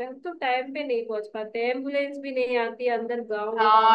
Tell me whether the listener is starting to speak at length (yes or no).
yes